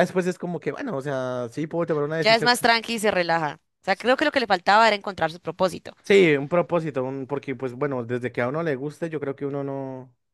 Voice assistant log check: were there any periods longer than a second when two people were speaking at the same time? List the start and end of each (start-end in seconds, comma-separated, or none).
none